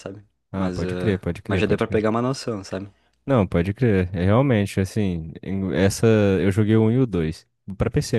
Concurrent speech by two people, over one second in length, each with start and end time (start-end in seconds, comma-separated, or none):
0.5-2.0